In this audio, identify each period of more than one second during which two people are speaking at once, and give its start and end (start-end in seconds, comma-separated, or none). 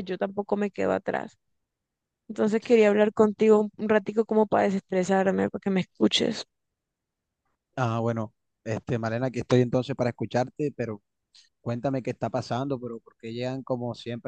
none